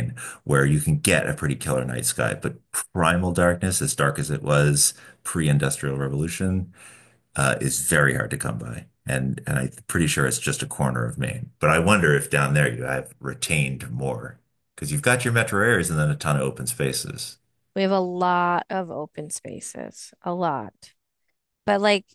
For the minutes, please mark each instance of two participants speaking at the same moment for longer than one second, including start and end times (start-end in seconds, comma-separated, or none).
none